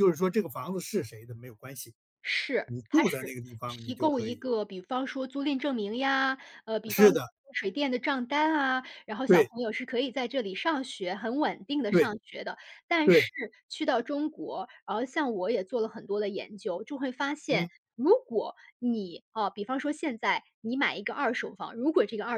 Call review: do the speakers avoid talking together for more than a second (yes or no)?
no